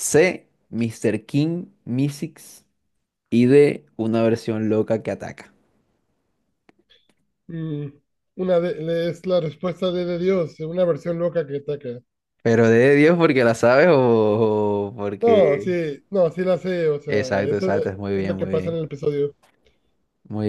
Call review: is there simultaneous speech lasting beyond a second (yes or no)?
yes